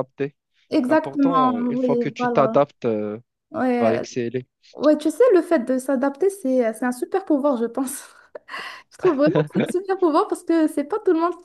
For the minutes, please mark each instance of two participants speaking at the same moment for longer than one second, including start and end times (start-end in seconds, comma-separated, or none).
0.9-2.6